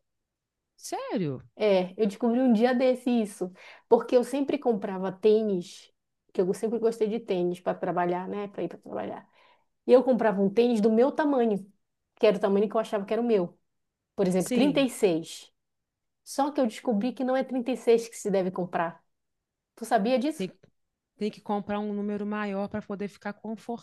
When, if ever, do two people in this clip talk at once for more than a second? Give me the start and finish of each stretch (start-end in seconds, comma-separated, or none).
none